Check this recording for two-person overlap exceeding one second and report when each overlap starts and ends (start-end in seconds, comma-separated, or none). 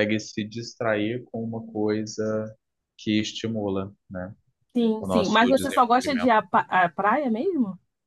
5.0-6.3